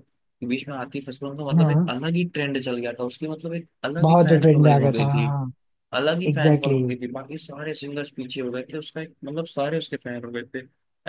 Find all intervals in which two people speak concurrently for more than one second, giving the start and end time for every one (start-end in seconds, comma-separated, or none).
4.0-5.3